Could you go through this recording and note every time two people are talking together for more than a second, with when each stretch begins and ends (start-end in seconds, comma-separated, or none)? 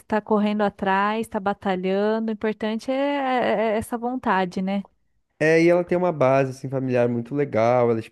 none